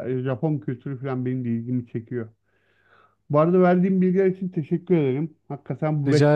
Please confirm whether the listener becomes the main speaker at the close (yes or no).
no